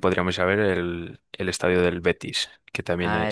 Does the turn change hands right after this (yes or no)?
yes